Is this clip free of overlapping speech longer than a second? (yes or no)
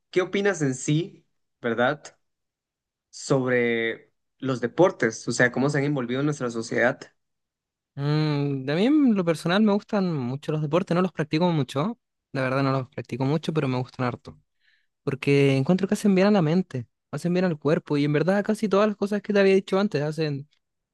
yes